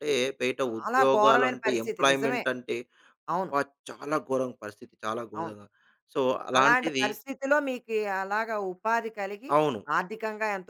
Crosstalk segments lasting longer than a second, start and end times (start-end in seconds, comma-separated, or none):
0.7-2.4